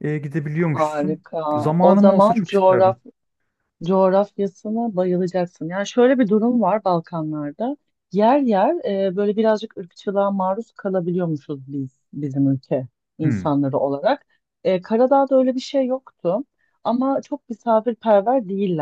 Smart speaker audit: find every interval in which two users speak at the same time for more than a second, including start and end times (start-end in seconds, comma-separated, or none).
0.6-3.0